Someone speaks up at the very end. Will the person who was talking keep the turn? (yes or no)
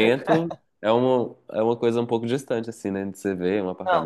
no